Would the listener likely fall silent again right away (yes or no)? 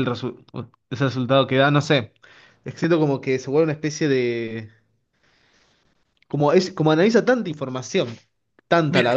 yes